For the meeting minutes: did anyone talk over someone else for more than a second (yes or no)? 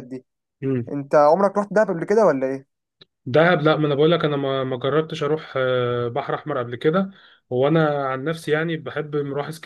no